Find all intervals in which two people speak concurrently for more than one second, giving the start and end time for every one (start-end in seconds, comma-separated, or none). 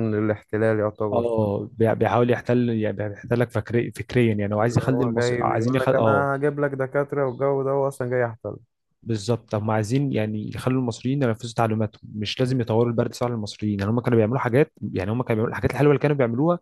4.6-6.2